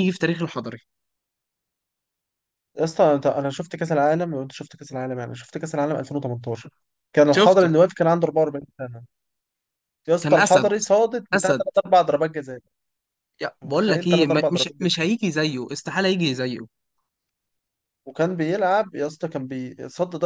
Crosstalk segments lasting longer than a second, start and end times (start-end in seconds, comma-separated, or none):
13.6-15.0